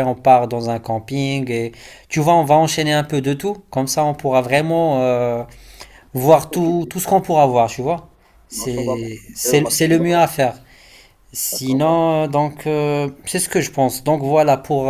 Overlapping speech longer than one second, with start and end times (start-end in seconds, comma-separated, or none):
8.5-10.2